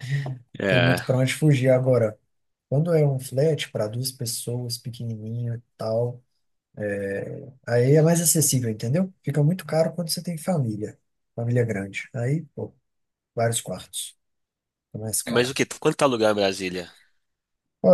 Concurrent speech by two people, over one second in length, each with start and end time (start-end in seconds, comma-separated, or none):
none